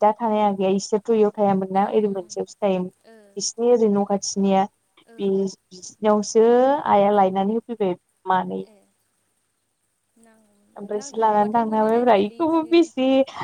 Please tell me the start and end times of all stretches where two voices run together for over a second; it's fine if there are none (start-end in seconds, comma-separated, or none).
10.9-12.7